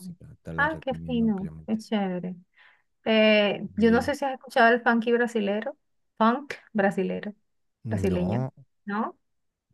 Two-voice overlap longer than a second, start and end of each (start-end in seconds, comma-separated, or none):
0.6-1.8